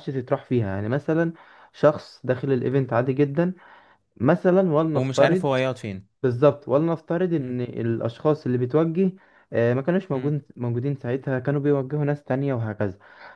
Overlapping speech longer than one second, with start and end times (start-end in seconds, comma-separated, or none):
none